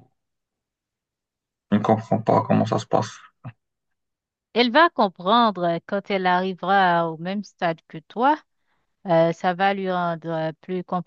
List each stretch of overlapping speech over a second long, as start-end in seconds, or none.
none